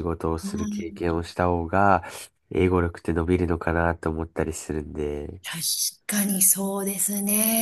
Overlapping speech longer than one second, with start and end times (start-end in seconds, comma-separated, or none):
none